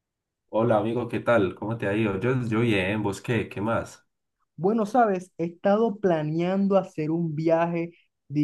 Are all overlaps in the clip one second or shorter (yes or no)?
yes